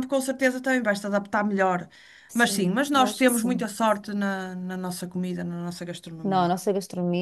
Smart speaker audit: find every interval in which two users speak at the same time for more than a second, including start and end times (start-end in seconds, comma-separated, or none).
2.3-3.7